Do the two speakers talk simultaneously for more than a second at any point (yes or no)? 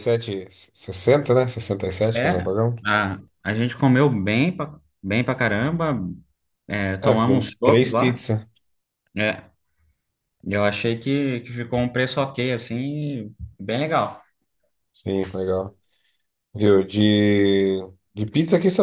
yes